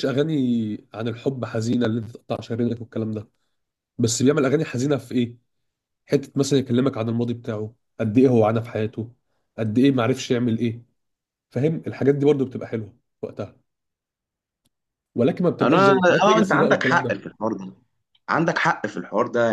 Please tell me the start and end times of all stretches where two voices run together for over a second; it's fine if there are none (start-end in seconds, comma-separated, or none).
15.6-17.2